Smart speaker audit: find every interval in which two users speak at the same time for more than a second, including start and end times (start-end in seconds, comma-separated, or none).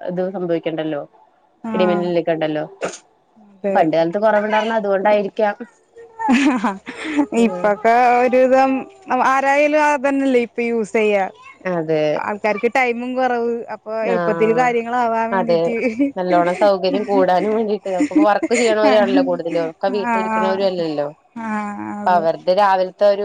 18.9-21.1